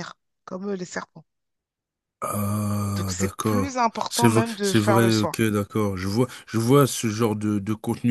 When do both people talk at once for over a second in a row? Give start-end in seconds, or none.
3.0-5.3